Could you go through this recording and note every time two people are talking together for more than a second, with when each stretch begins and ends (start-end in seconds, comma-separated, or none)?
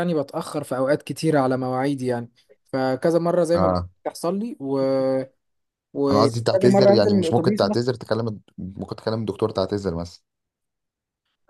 6.1-7.8